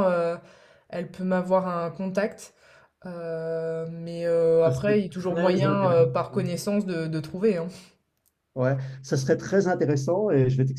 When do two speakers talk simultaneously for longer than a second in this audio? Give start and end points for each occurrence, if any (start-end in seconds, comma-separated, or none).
4.7-6.0